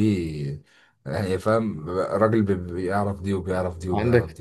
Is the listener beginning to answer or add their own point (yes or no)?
yes